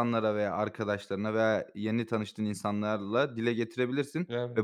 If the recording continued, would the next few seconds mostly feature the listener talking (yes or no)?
no